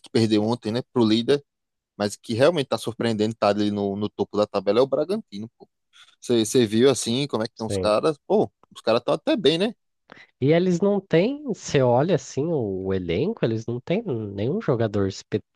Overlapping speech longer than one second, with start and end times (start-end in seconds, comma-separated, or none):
none